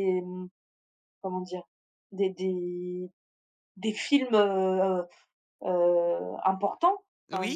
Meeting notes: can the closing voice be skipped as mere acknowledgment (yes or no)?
yes